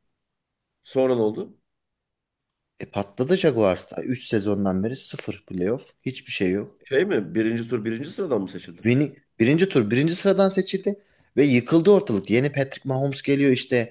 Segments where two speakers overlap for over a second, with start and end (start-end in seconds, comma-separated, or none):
none